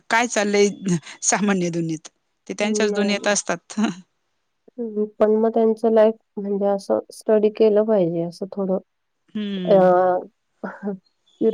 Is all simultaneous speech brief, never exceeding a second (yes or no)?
yes